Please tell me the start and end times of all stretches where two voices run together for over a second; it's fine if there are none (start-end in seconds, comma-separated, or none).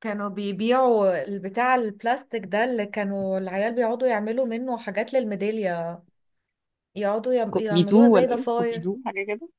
7.5-8.9